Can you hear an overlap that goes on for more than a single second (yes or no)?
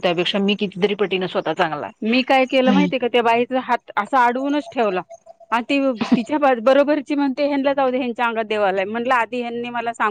no